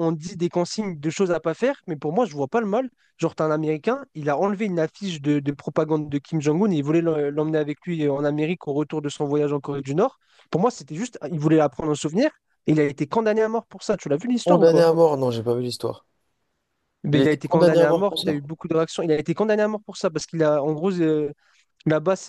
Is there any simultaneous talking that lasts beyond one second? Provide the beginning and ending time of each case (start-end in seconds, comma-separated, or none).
17.1-18.4